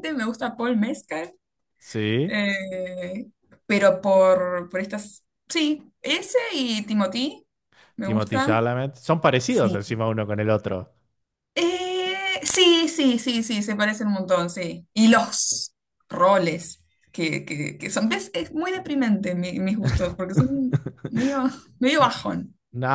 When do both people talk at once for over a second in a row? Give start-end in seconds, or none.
none